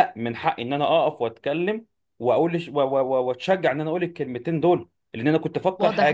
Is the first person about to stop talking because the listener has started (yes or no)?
yes